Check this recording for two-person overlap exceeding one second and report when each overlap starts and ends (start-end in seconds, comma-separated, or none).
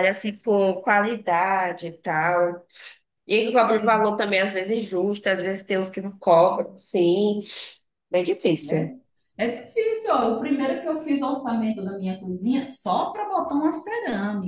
none